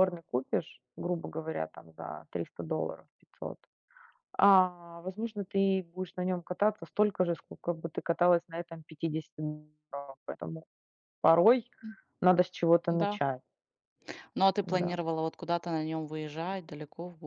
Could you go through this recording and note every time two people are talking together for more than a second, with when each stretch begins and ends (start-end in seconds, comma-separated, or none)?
none